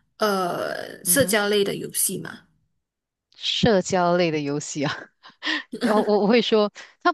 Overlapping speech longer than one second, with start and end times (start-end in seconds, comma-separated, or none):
none